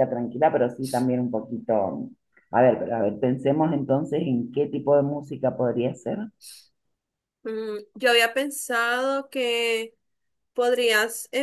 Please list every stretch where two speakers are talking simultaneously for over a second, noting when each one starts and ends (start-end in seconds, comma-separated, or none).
none